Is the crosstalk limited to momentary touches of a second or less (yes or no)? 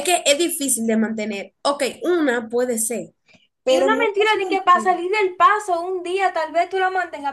no